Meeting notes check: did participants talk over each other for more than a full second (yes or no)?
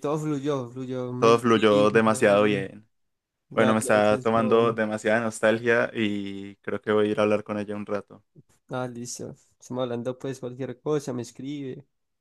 yes